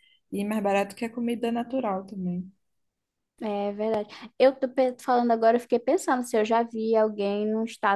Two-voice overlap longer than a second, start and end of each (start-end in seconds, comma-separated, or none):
none